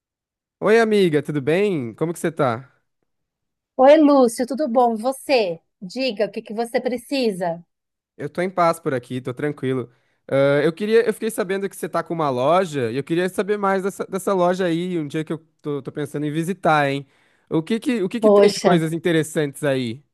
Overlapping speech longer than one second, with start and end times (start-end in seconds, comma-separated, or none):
none